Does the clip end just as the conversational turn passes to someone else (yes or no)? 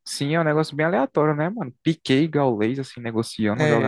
yes